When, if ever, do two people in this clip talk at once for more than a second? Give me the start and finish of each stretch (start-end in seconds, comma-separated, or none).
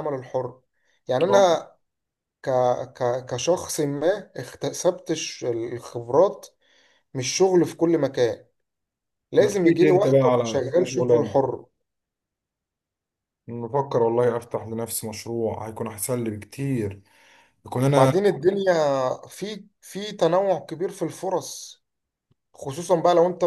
9.4-11.3